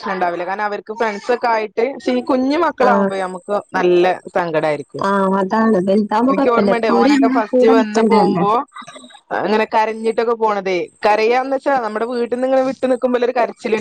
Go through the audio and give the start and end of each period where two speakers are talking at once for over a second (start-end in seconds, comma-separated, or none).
6.3-8.3